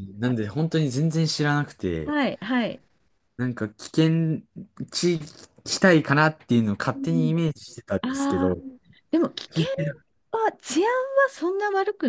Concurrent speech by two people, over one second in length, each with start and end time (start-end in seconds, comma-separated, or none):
none